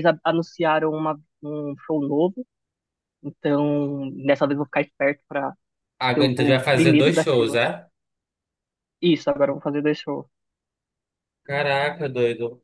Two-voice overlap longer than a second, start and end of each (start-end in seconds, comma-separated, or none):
6.2-7.6